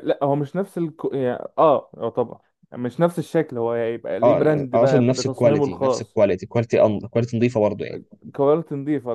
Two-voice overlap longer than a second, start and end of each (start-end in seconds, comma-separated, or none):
4.2-6.2